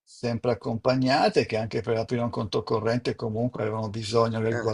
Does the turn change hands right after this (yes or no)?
no